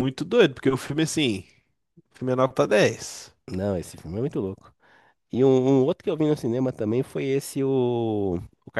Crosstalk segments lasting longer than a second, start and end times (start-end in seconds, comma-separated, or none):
none